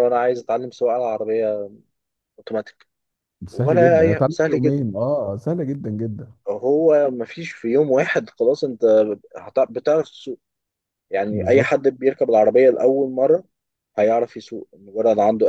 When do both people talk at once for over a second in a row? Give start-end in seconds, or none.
3.5-4.8